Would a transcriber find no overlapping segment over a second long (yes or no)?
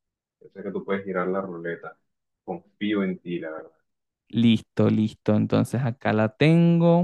yes